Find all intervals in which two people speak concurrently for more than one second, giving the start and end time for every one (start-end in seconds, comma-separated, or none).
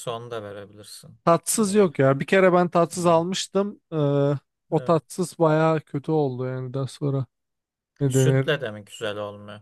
none